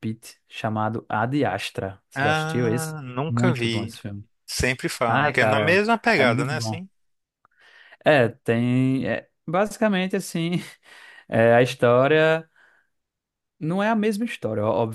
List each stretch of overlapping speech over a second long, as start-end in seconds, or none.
2.1-4.0, 5.0-6.8